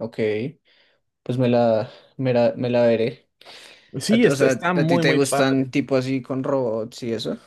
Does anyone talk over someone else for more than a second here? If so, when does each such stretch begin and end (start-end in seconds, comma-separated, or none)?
4.1-5.7